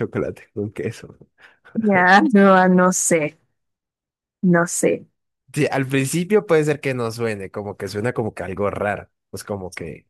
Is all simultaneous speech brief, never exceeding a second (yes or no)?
yes